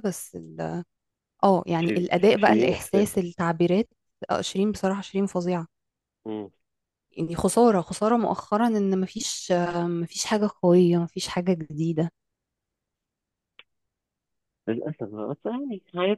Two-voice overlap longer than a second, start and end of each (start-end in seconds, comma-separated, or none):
1.8-3.2